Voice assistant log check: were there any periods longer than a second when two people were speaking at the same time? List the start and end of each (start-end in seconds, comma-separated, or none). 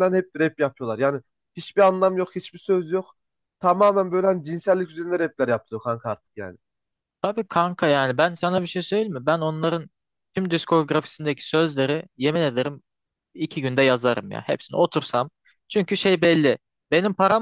none